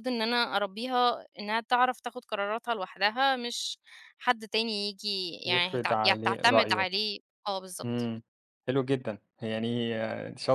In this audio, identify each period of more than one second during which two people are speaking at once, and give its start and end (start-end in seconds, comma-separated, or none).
5.5-6.8